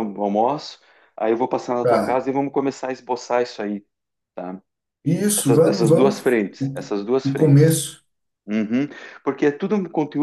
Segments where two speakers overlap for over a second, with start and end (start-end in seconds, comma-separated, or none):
5.4-7.8